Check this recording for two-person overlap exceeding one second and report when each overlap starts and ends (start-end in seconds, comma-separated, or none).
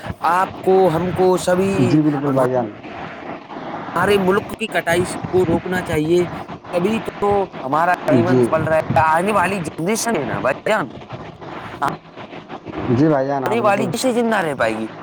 none